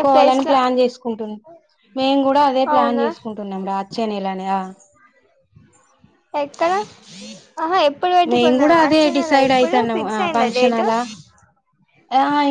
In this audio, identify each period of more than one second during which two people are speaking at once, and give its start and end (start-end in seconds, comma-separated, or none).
8.3-10.8